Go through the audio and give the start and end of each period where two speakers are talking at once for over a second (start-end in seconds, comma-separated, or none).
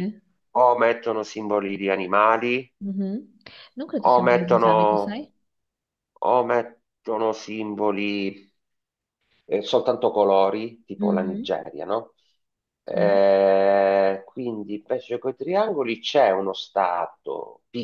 4.0-5.2